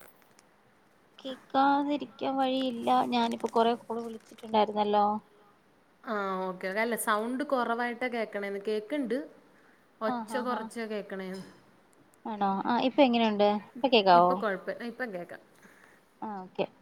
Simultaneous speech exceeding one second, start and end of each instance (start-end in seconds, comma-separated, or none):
none